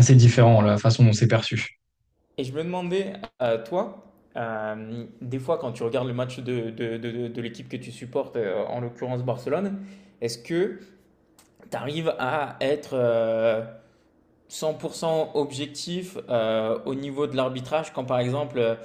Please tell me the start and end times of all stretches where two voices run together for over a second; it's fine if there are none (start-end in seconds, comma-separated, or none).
none